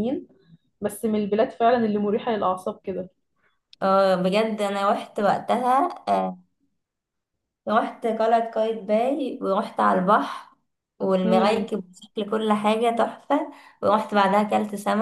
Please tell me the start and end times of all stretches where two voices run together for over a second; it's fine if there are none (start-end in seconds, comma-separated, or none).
none